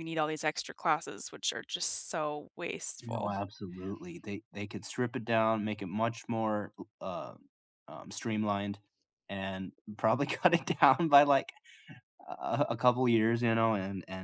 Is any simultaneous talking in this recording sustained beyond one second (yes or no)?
no